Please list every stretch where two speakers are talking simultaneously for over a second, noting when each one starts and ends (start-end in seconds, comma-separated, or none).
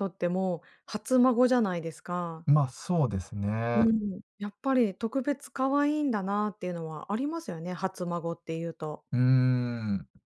none